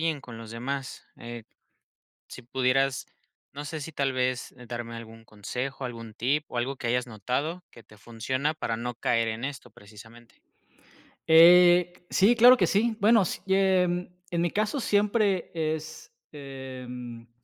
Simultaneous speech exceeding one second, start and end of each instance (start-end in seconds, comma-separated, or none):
none